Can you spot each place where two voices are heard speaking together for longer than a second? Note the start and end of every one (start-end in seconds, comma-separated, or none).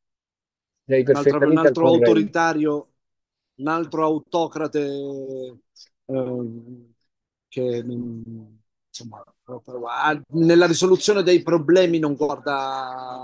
1.1-2.4